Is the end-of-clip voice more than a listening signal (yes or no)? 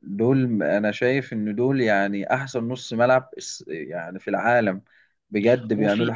no